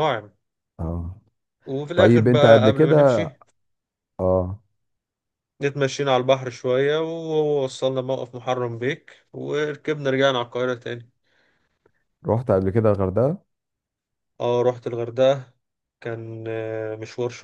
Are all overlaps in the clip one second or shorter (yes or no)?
no